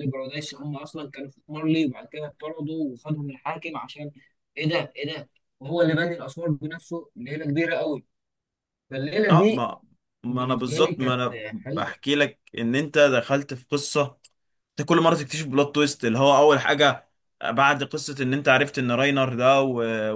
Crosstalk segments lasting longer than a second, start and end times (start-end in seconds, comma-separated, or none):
10.3-12.0